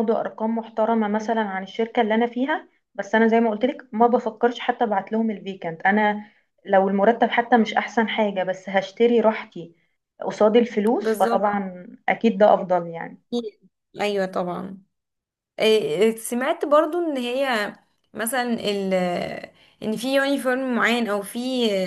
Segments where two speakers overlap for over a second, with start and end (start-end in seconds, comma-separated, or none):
none